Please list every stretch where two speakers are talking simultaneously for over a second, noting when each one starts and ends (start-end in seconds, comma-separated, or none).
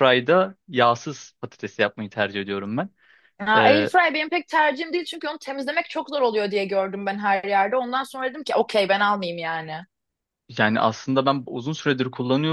none